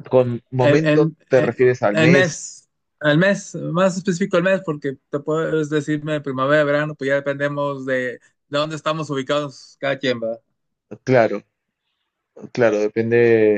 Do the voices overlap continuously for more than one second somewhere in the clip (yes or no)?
yes